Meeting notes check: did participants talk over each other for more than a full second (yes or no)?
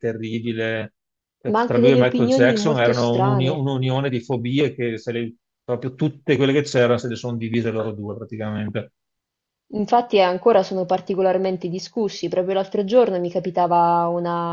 yes